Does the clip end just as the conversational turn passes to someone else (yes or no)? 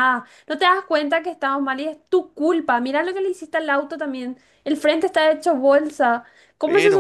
no